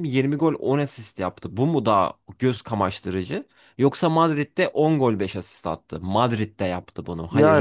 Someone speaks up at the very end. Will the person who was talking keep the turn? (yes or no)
no